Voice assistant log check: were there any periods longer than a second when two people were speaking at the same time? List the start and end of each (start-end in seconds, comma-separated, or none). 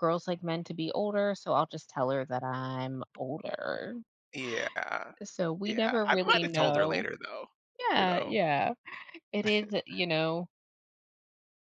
5.6-7.1